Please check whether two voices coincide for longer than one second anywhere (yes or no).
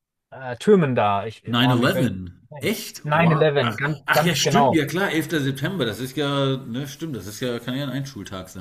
yes